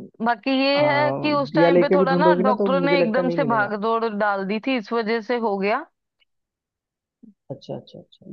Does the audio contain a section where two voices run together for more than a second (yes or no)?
yes